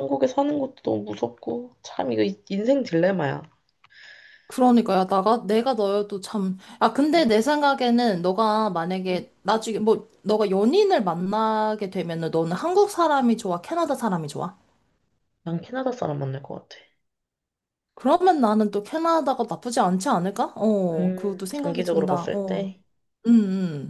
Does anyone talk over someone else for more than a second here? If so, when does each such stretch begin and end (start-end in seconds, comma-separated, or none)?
20.9-22.7